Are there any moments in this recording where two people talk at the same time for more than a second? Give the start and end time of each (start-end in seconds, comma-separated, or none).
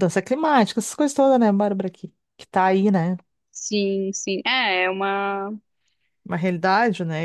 none